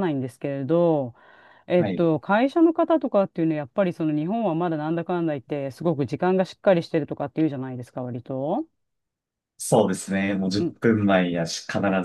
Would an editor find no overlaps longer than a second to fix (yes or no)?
yes